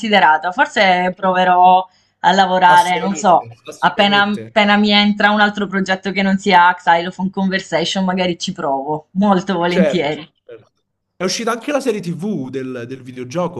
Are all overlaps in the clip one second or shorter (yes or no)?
no